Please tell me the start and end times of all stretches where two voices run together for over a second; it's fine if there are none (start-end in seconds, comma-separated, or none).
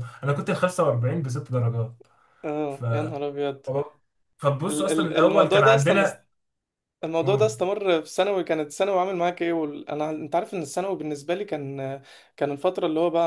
4.7-6.0